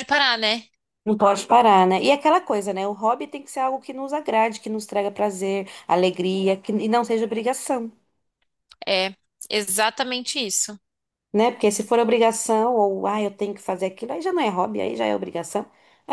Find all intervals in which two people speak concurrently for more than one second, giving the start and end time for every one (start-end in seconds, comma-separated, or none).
none